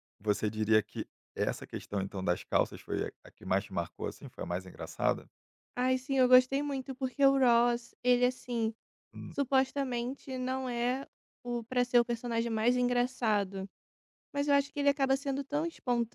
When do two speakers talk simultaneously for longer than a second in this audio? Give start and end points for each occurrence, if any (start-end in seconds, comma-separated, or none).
none